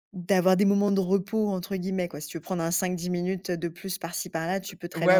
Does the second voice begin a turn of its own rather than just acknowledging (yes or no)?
yes